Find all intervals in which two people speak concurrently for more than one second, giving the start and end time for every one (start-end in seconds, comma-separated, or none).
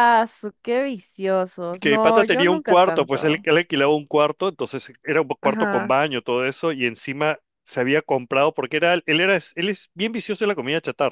1.8-3.5